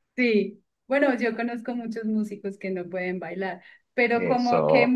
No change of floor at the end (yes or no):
yes